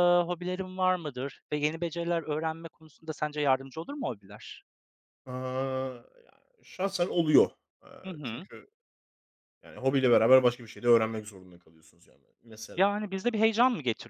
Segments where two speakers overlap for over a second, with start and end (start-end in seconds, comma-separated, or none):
none